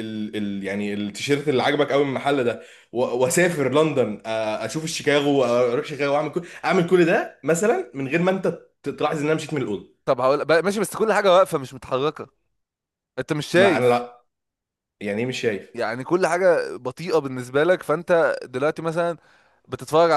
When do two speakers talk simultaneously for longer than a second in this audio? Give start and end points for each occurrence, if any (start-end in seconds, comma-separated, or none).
none